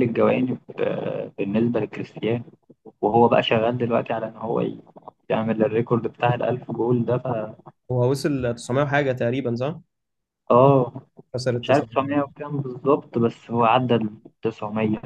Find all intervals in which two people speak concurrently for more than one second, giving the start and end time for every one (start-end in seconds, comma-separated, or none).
none